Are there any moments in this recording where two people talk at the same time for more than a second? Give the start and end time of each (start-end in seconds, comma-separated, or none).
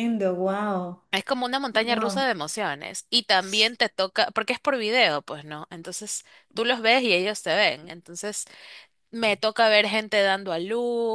none